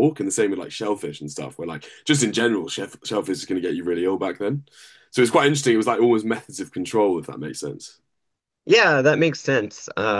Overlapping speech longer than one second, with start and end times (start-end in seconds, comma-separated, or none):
none